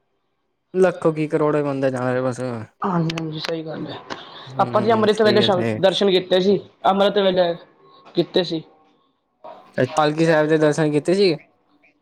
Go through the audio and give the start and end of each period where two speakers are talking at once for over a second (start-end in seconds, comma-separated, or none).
4.6-6.2